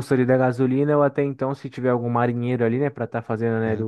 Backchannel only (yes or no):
no